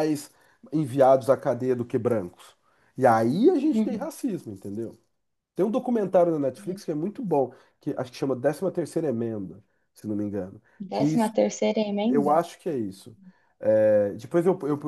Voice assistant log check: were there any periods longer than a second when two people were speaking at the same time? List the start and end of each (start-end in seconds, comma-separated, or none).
none